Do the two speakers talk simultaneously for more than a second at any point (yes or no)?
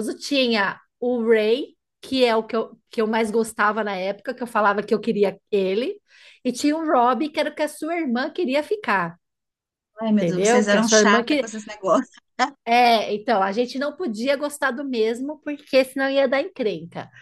yes